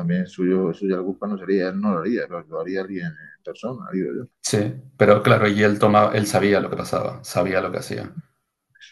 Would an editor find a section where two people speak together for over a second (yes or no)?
no